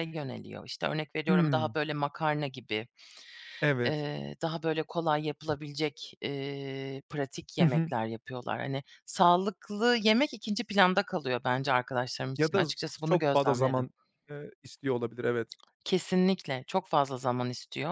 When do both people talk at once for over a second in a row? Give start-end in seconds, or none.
12.4-13.9